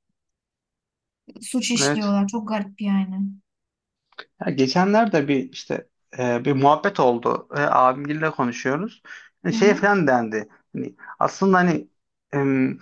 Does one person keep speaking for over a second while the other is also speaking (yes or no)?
no